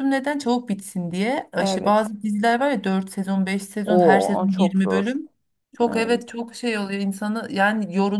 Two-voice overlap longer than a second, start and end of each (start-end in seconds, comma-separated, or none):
3.9-5.1